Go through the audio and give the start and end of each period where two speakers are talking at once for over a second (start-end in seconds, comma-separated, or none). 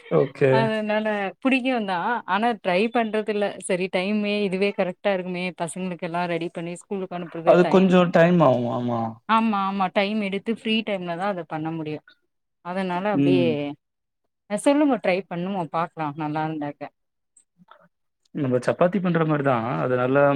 none